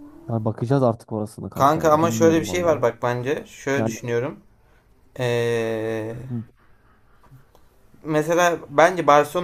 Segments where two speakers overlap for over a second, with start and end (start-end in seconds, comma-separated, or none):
1.5-2.9